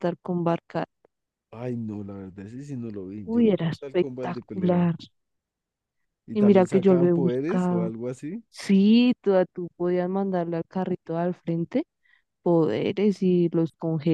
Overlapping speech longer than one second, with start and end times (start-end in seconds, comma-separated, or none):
3.2-4.9, 6.3-7.9